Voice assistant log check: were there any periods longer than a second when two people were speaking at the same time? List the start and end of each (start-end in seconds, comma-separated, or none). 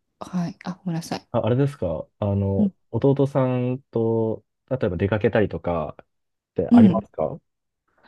none